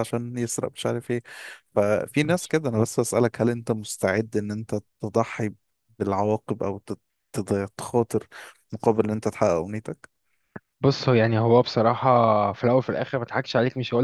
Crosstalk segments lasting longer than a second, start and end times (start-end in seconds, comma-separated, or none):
none